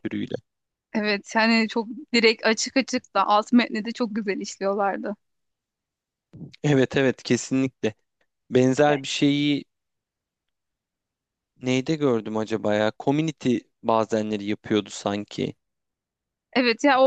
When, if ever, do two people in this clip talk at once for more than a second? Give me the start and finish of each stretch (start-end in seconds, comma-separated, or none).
none